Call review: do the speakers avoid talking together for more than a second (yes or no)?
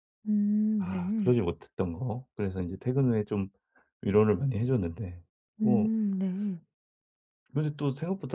yes